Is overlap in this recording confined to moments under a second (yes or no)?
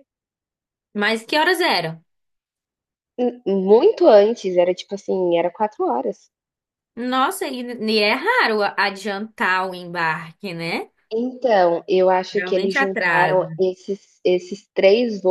no